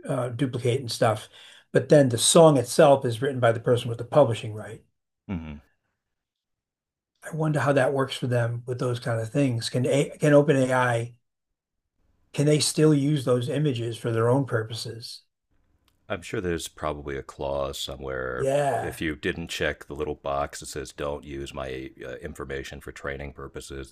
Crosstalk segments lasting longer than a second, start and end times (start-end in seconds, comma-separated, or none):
none